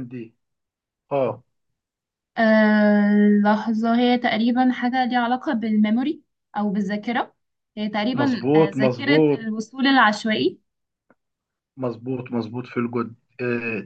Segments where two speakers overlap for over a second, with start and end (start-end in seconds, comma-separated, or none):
8.1-9.5